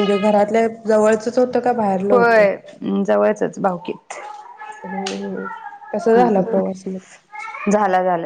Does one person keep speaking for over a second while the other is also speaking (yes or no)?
no